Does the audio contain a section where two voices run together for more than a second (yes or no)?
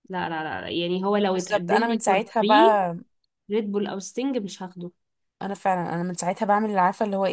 yes